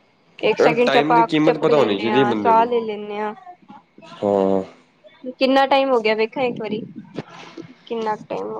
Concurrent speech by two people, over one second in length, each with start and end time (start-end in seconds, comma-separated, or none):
0.6-2.7